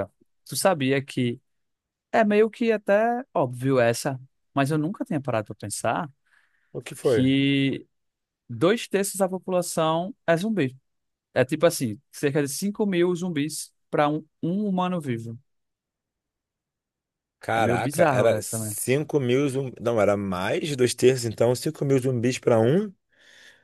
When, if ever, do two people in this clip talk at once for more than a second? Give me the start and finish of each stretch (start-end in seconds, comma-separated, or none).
17.5-18.8